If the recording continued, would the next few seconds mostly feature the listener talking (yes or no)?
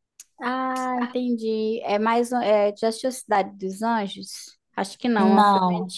no